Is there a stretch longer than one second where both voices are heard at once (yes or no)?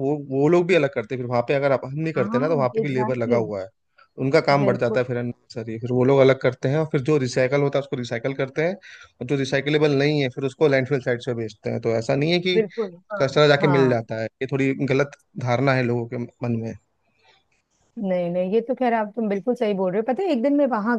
yes